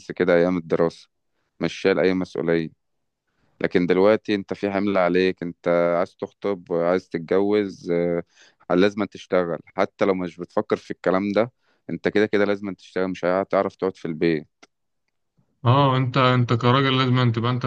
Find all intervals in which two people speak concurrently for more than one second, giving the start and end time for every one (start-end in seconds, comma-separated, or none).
none